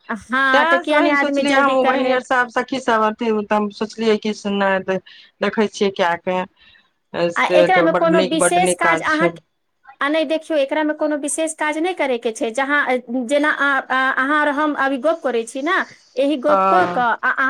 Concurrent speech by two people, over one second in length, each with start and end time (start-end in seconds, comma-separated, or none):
0.5-2.2